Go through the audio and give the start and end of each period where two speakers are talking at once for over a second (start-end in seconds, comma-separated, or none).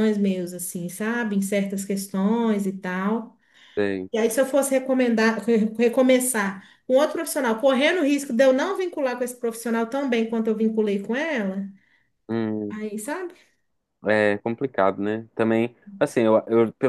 none